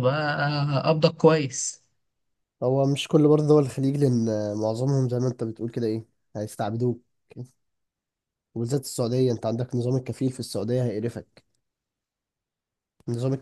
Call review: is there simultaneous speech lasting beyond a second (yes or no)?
no